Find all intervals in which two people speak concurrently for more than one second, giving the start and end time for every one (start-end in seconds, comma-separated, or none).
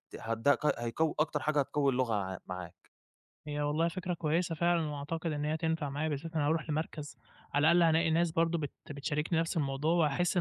none